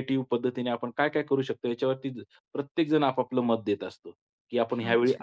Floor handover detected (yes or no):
no